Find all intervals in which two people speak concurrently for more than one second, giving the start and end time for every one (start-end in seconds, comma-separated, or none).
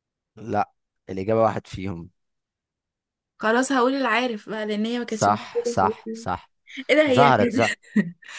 5.1-6.3